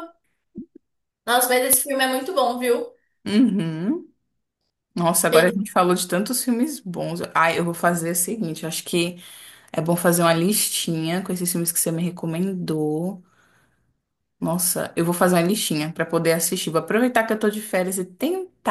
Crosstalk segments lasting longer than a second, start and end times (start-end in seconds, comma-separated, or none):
none